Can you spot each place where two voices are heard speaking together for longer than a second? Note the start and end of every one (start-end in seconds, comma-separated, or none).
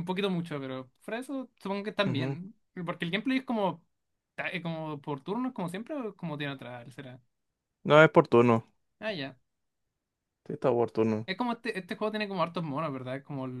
none